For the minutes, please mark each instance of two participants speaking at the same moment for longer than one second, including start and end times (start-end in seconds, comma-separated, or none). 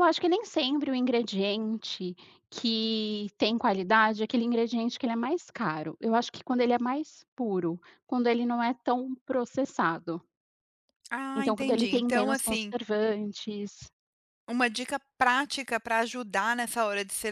11.4-12.7